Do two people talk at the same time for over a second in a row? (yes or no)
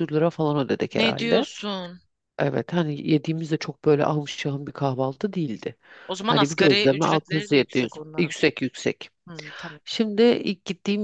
yes